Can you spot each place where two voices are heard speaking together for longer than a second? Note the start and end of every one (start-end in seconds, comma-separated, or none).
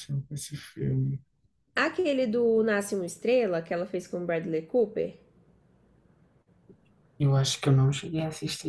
none